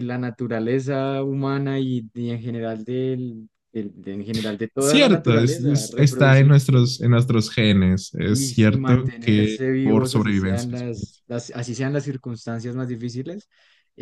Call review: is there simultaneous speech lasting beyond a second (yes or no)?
yes